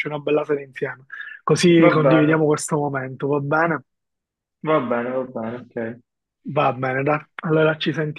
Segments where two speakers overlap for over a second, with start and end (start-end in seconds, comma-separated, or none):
none